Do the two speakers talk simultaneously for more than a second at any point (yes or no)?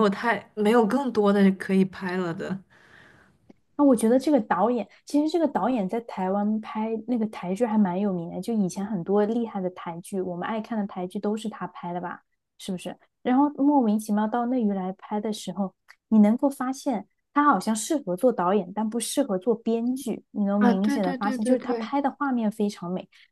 yes